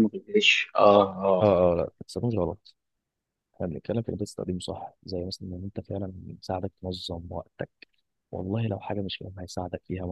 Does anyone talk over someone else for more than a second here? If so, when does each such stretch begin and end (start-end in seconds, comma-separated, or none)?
none